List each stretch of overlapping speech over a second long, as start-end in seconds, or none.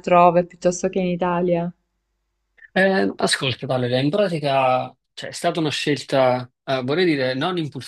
none